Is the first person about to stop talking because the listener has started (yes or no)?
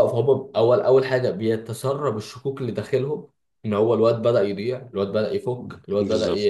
no